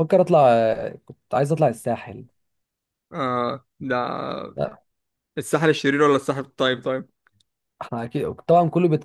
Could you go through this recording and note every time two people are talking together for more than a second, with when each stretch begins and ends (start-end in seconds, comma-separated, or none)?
none